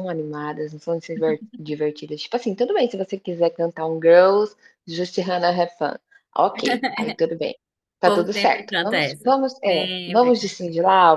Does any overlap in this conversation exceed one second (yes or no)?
yes